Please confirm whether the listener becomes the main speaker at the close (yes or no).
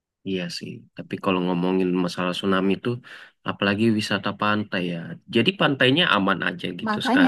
yes